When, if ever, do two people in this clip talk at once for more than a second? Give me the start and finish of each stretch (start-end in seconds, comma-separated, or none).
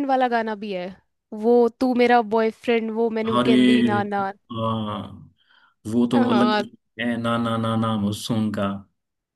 none